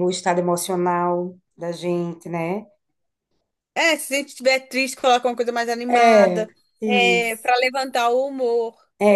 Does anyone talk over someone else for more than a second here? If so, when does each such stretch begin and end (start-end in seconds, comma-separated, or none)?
5.9-7.7